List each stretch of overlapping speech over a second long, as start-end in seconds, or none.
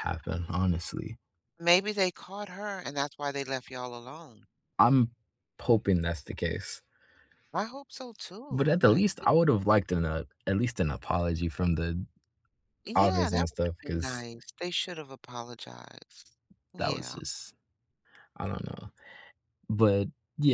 12.9-14.2